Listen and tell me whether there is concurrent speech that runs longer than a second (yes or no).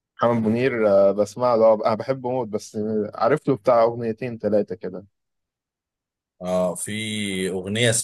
no